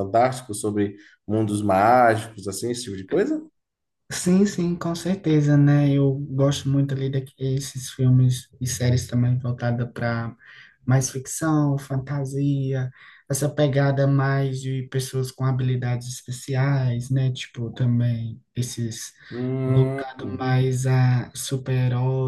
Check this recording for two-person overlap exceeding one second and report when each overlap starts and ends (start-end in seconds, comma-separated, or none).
none